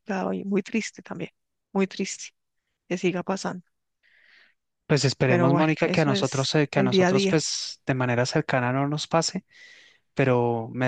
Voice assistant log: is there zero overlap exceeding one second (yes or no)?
no